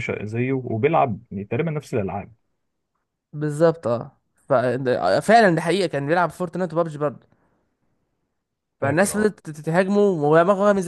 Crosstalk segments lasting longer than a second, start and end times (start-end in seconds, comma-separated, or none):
none